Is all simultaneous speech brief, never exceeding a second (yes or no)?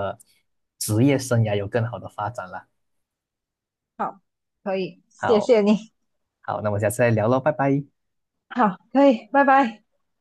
yes